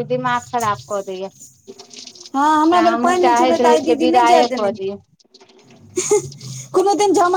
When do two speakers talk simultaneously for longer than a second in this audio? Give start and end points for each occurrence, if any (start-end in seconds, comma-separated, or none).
2.7-4.8